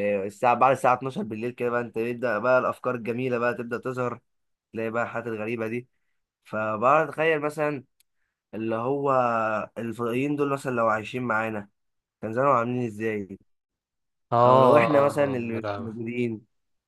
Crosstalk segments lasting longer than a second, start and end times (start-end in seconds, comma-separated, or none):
14.4-16.0